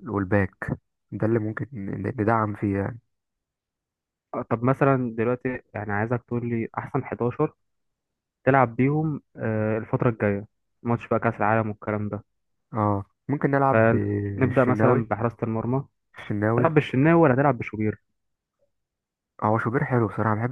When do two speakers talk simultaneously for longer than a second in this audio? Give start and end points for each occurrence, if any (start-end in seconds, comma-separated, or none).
13.7-15.1